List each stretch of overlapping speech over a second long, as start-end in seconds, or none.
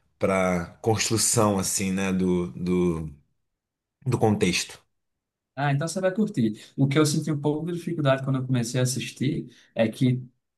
none